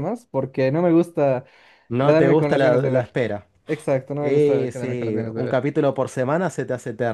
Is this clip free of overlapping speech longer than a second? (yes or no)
no